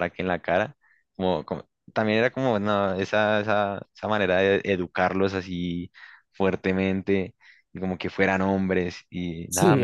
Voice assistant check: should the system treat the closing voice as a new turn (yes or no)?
no